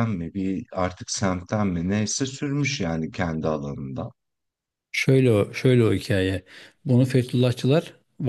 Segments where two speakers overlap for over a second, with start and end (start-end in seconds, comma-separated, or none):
none